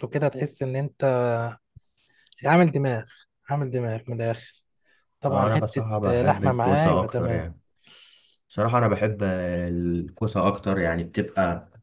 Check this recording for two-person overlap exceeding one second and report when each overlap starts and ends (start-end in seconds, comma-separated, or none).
5.3-7.4